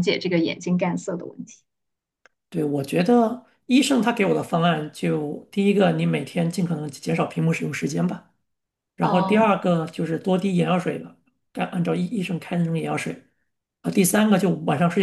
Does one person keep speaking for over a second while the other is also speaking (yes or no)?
no